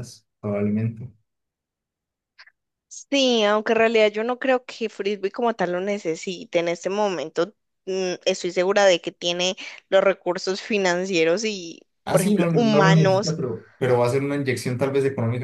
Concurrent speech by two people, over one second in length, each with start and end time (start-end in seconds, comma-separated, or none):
12.1-13.4